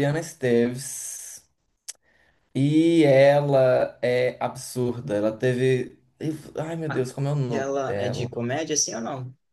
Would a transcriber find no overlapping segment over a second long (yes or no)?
no